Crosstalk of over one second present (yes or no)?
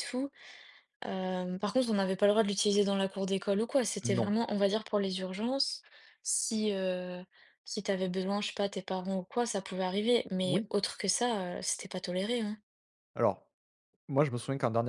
no